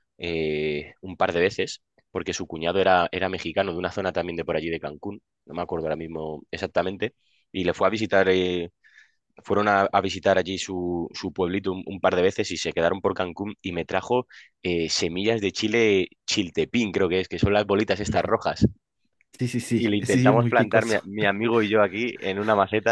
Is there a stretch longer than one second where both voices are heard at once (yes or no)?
yes